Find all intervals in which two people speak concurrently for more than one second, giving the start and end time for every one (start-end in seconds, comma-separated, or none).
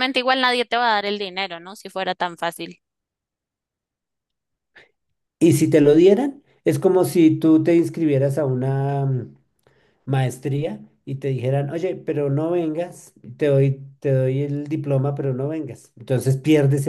none